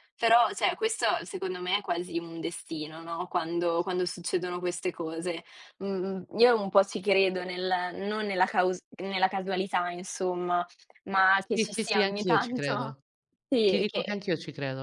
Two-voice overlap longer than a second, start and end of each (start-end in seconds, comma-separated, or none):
11.5-13.0